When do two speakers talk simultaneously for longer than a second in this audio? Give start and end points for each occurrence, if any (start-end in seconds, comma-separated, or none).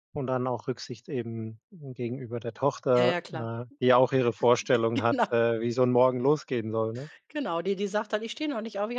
none